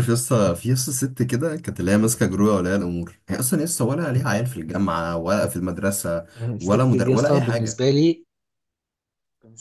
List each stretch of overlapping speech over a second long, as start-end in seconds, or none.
6.4-7.9